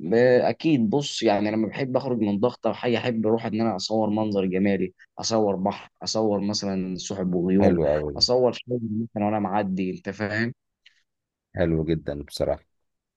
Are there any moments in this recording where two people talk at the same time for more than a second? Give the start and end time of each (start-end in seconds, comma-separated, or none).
none